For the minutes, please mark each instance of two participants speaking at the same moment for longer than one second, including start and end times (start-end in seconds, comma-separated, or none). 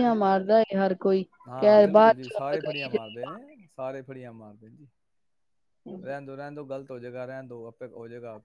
1.5-3.0